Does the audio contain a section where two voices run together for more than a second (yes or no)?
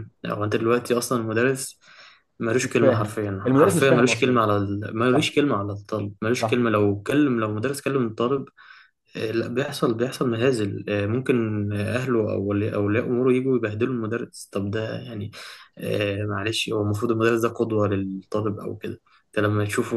yes